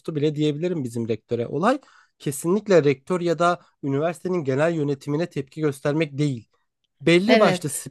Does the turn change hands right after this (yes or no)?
no